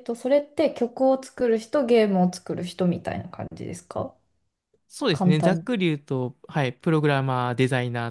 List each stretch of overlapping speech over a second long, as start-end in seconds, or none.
none